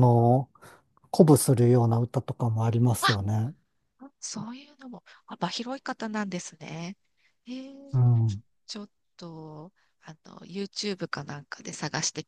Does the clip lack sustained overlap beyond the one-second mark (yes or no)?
yes